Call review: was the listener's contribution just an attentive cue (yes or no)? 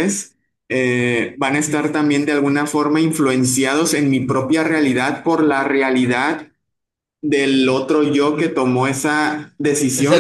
yes